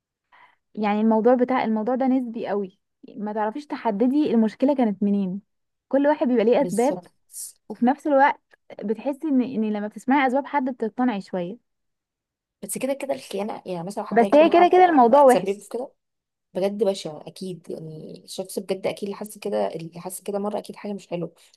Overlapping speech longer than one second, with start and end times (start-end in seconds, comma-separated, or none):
14.1-15.7